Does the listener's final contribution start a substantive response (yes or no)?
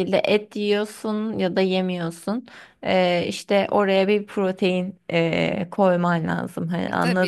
yes